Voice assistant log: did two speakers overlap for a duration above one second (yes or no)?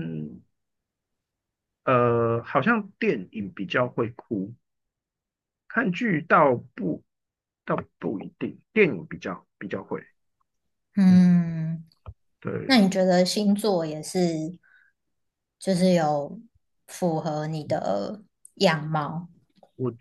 no